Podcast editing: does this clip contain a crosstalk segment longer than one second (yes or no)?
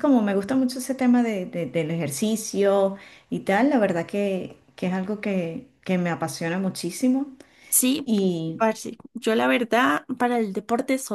no